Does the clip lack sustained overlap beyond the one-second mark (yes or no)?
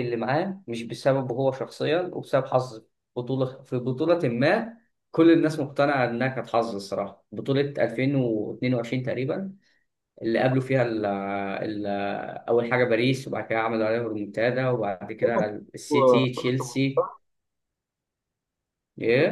no